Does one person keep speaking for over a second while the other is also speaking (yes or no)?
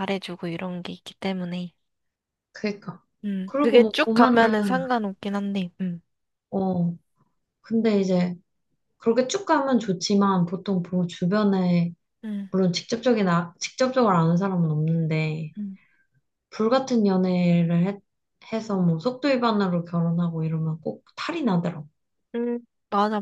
yes